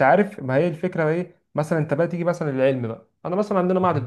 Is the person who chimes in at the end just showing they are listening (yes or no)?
yes